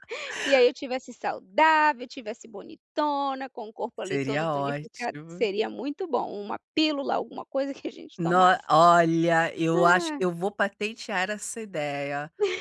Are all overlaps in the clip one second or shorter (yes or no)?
no